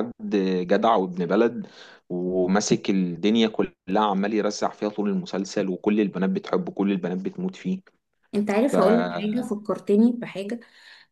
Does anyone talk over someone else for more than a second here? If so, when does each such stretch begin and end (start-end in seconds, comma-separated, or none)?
none